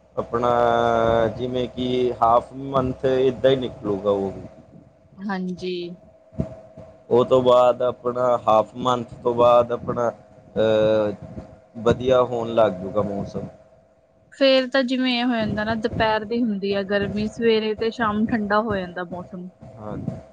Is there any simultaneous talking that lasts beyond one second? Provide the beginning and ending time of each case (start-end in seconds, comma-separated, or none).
none